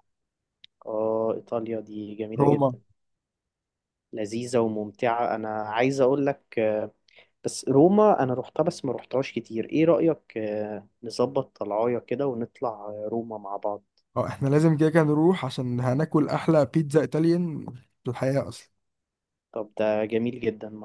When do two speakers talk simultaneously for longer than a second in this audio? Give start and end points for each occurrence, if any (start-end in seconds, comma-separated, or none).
none